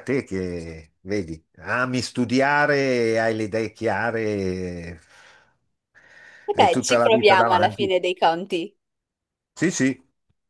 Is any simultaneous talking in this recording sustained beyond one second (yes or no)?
yes